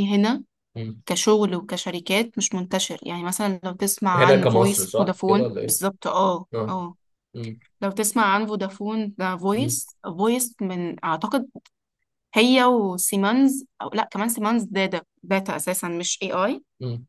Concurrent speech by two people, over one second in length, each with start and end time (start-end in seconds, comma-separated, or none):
4.2-5.8